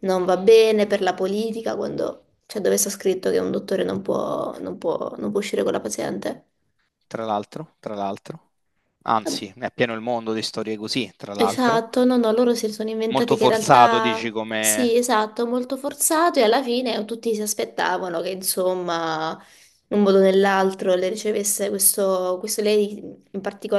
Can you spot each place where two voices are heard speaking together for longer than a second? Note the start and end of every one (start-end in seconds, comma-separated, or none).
13.1-15.0